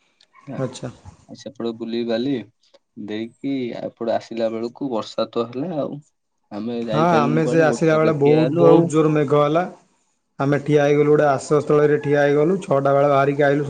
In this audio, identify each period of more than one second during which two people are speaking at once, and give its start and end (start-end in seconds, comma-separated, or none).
6.9-8.9